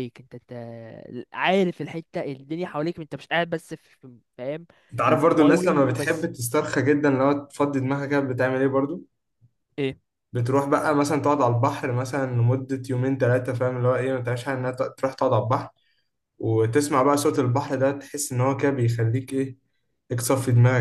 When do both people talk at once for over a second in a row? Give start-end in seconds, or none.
5.1-6.3